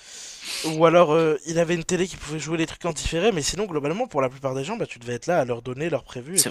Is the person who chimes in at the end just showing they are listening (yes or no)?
no